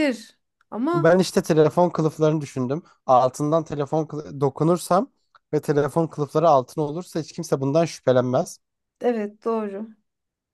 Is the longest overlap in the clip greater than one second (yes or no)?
no